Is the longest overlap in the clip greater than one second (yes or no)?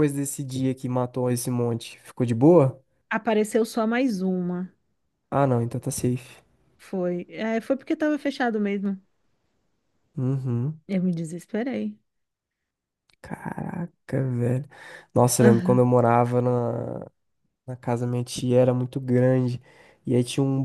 no